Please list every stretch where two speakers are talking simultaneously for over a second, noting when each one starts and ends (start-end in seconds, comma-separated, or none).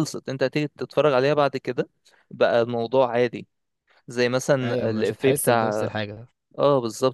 4.6-5.9